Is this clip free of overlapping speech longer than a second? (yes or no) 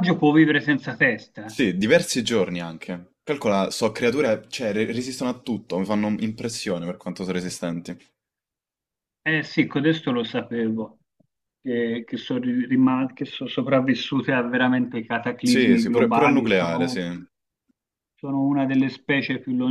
no